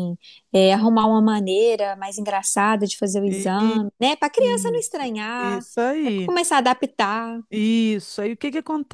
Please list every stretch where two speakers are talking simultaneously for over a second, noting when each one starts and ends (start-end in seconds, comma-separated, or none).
4.4-6.3